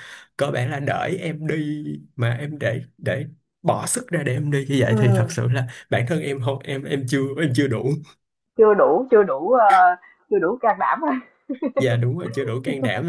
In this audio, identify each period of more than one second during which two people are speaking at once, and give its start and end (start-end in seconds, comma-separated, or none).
none